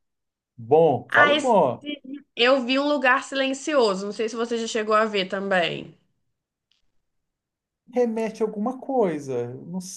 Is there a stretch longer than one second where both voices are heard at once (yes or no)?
no